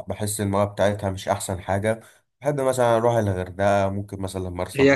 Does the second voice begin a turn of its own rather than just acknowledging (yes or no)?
yes